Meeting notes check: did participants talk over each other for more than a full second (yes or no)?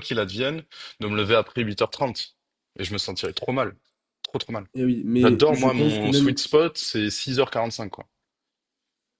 yes